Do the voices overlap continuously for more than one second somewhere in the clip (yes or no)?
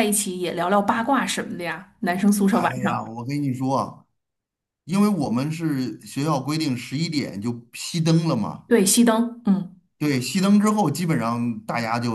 no